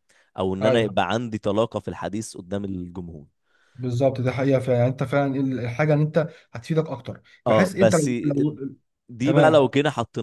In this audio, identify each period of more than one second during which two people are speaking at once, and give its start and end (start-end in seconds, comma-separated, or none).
none